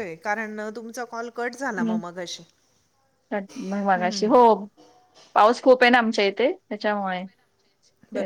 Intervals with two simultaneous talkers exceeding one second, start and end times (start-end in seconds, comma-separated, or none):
none